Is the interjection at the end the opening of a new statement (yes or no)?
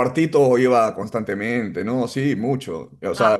no